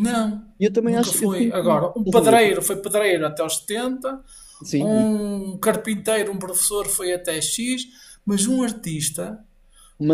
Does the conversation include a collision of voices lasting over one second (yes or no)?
yes